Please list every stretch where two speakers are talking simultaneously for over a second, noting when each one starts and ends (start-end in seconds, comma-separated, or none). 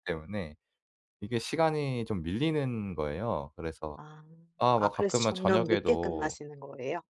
4.8-6.4